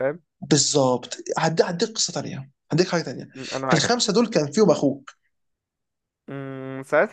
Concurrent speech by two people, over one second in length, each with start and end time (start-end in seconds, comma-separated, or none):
none